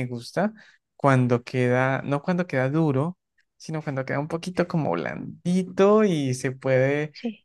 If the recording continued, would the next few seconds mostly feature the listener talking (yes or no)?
no